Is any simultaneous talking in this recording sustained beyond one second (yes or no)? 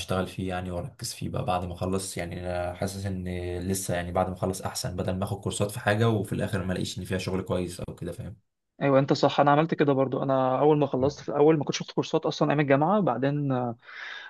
no